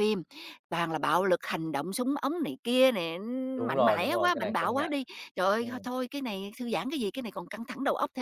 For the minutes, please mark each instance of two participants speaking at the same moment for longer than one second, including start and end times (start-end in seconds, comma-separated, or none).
3.5-4.9